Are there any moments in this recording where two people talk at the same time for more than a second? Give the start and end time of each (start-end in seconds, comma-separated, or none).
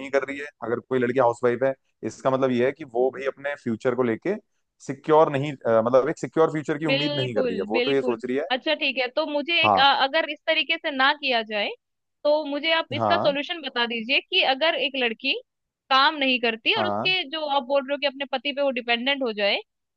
6.9-8.5